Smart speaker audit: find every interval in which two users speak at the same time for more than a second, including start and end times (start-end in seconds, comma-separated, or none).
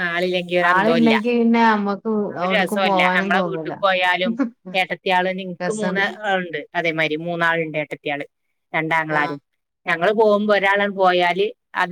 2.4-3.7